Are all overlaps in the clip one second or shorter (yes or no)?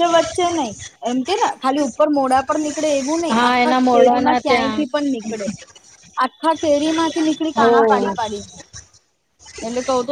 no